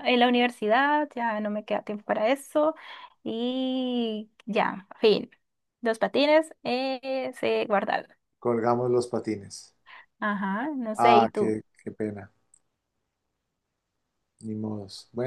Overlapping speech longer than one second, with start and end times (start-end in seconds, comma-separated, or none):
none